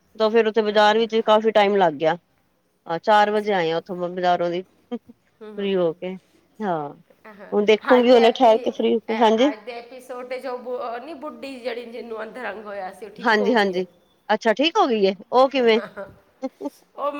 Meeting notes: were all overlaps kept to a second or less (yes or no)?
yes